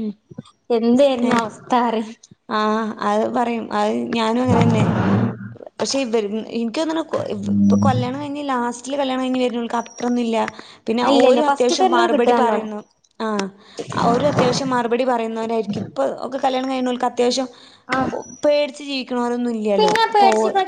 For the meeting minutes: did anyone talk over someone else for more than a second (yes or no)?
yes